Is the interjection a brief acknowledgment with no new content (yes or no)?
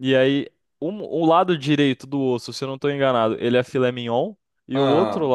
yes